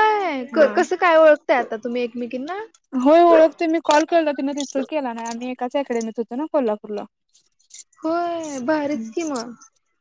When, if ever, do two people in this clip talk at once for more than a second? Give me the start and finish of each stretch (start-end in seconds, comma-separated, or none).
none